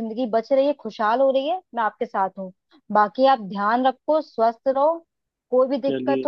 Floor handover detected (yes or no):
no